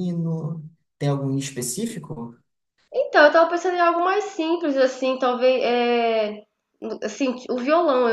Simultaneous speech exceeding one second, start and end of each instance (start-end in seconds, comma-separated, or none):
none